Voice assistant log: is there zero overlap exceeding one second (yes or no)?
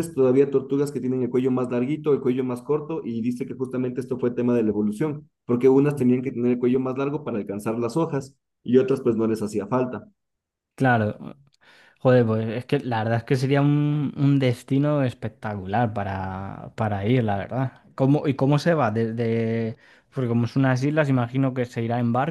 yes